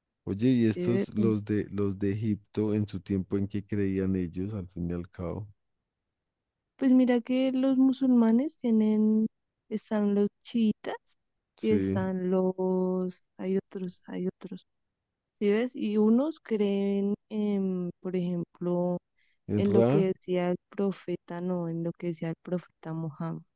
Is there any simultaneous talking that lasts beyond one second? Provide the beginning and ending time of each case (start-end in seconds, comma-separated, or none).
none